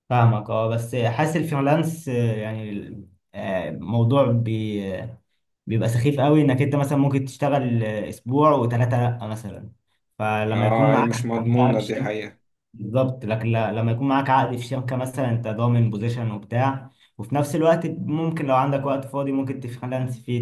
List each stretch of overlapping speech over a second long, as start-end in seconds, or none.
10.5-12.1